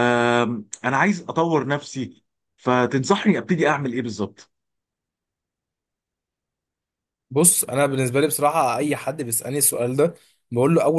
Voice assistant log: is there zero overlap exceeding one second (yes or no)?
yes